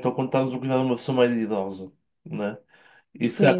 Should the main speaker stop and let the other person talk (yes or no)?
no